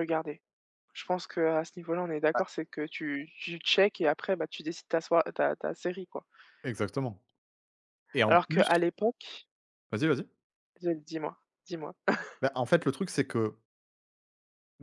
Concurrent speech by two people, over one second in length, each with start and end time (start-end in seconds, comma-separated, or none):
none